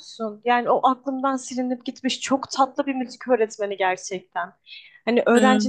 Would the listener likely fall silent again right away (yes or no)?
yes